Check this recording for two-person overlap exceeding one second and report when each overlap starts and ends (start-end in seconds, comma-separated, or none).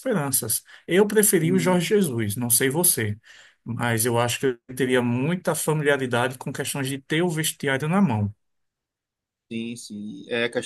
none